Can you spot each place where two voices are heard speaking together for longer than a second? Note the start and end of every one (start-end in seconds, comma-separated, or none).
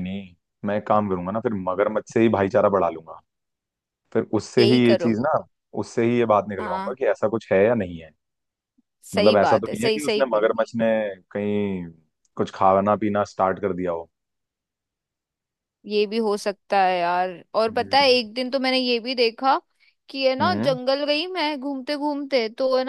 9.1-10.5